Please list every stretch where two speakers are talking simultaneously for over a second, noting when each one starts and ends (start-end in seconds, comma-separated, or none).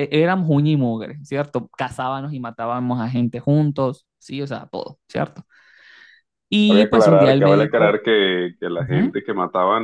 6.7-8.0